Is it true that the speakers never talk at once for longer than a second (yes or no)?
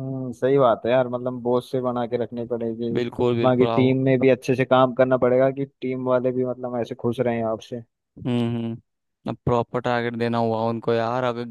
yes